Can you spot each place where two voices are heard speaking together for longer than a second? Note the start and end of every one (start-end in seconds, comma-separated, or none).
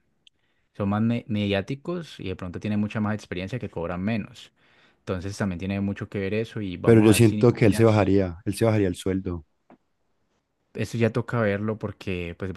6.8-8.1